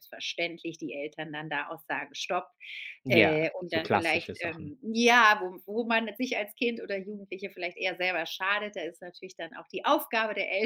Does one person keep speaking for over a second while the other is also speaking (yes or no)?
yes